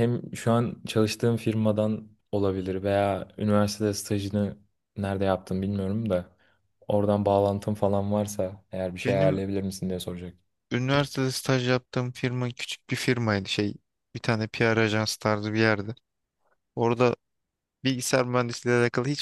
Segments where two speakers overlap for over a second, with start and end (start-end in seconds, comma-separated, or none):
none